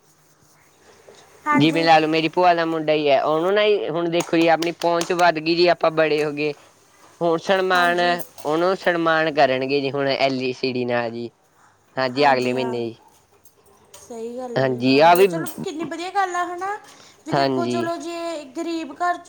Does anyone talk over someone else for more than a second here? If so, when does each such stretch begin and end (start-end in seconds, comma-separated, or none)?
none